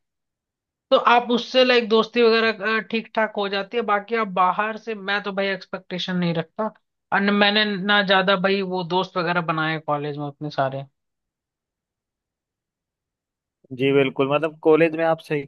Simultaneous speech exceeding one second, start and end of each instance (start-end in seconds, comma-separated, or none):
none